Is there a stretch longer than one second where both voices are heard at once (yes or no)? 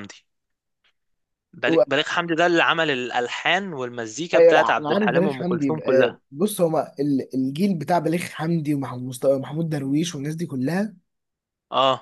yes